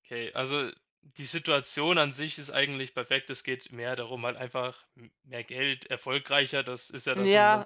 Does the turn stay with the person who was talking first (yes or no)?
no